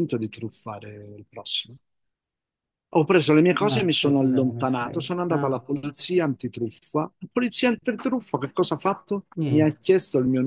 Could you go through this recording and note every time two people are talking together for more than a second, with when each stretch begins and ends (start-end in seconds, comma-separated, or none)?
3.7-5.5